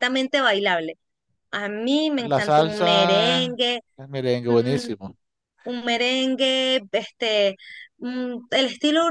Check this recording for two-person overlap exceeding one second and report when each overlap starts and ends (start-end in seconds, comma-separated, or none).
2.2-3.6